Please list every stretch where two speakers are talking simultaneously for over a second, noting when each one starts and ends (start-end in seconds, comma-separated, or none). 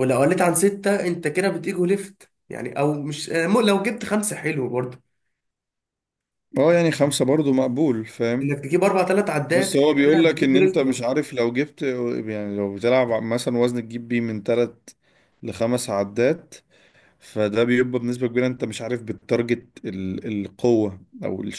9.5-11.0